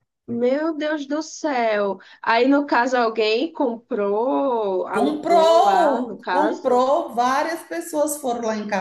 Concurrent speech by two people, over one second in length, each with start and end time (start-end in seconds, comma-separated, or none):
4.9-6.8